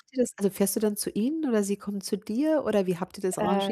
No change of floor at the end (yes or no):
no